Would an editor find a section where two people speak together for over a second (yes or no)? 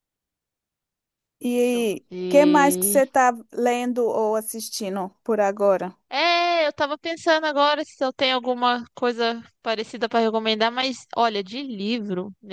yes